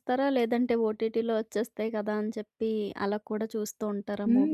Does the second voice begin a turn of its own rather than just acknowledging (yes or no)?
yes